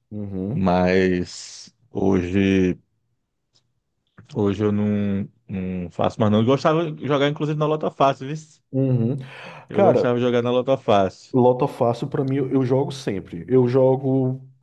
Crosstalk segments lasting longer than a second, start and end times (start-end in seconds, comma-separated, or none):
none